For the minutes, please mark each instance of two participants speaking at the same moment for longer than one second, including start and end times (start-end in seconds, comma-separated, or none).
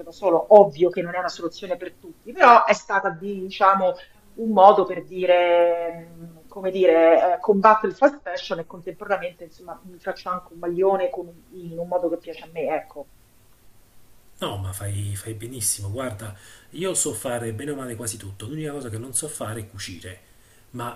none